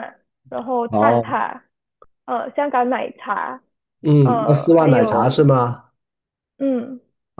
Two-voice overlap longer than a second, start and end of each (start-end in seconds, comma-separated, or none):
4.2-5.4